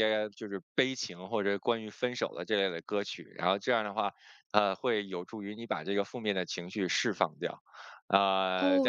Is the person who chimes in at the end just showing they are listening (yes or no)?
no